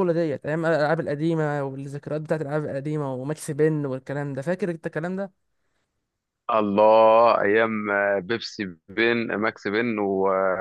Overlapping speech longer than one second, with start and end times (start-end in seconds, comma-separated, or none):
none